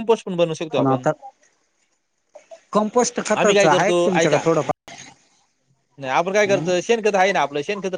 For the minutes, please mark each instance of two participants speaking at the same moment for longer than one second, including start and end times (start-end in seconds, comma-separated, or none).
3.4-4.9